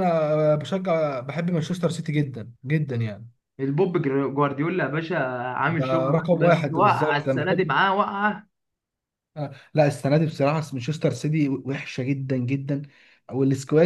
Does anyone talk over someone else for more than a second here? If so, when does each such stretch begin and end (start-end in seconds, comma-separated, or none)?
5.8-7.7